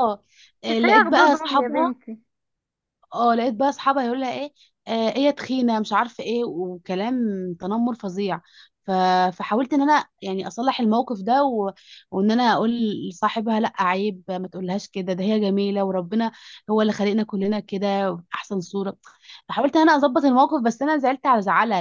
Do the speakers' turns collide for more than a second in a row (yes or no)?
yes